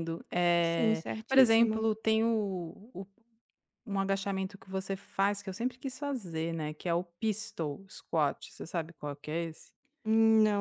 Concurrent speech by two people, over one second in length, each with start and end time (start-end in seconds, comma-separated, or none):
0.6-1.9